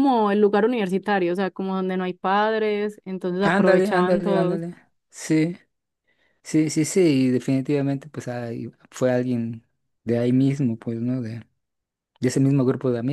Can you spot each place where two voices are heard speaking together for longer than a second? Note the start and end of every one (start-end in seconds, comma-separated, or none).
3.4-4.6